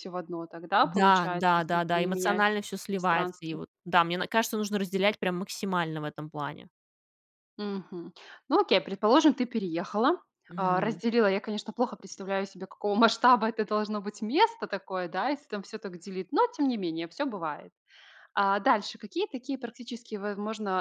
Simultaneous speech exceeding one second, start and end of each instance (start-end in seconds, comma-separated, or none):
0.8-3.6